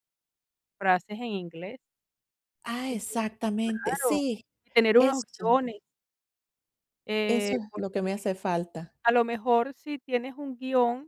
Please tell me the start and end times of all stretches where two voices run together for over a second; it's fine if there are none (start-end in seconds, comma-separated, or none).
none